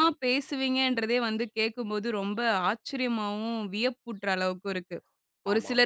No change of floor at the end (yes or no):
yes